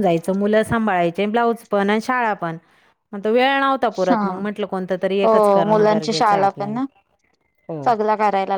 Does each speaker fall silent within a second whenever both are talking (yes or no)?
no